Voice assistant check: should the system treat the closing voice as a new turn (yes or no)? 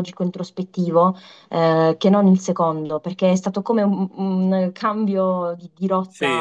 yes